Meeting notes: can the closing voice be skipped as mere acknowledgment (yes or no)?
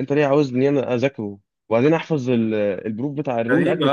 no